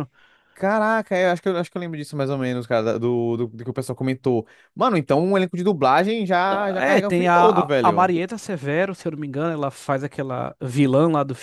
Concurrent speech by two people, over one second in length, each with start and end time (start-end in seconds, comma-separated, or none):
6.8-8.1